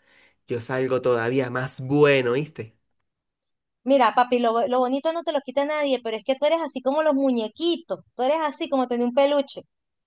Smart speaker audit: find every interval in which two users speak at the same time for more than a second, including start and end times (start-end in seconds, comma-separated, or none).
none